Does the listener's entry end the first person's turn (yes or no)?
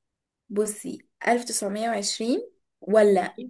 no